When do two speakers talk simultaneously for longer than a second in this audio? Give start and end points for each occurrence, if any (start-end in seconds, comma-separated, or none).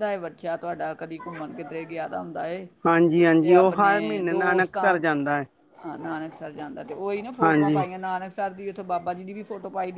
3.4-5.0